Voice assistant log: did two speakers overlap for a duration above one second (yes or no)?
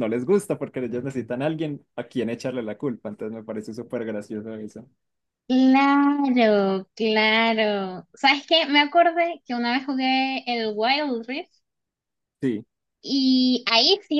no